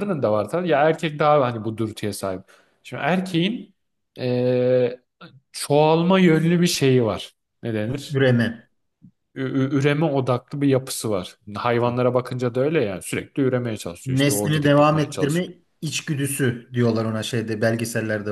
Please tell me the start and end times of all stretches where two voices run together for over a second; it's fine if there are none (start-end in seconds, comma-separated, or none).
14.1-15.5